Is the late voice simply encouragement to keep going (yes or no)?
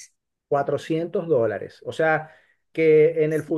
yes